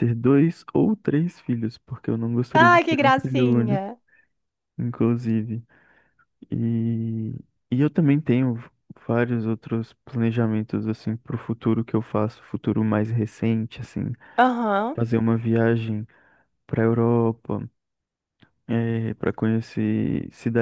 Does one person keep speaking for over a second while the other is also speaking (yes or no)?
yes